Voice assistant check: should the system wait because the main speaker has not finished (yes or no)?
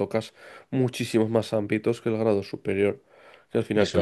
yes